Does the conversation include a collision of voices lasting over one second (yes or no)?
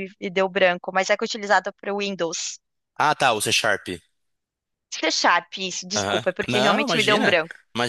yes